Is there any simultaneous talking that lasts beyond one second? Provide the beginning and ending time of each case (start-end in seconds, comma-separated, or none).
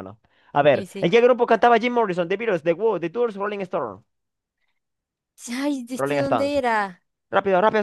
none